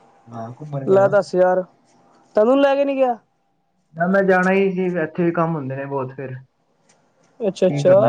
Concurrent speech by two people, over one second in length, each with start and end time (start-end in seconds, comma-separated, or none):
none